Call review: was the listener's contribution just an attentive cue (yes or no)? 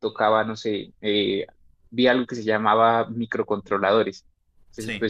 yes